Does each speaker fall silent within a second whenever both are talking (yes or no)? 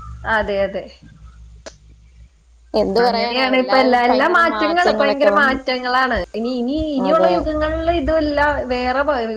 no